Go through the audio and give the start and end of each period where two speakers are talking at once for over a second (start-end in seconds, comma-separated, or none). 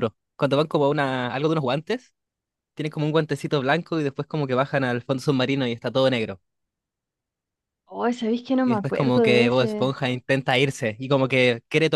8.6-9.9